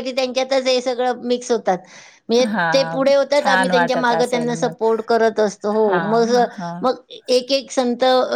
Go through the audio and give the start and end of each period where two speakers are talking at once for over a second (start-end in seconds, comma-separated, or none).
2.5-4.7